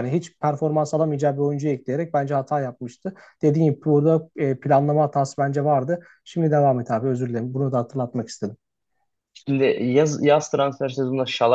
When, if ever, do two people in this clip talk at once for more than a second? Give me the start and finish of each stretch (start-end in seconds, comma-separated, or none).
none